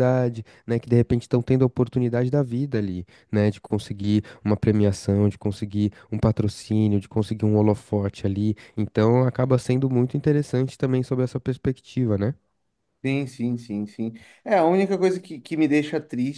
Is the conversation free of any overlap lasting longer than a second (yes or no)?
yes